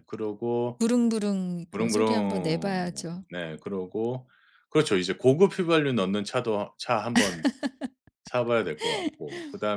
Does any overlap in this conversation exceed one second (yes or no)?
yes